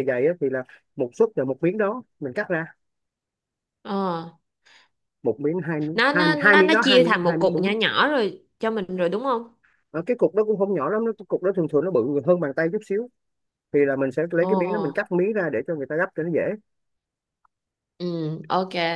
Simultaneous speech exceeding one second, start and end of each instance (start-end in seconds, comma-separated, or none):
5.9-7.7